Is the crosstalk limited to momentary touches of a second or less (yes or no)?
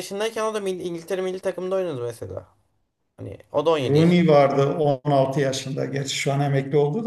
yes